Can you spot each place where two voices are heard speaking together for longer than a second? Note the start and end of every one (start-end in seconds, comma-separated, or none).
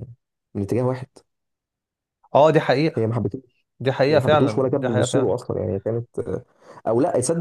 4.1-5.3